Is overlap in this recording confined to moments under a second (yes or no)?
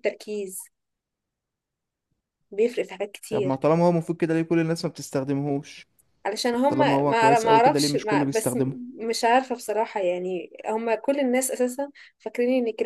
no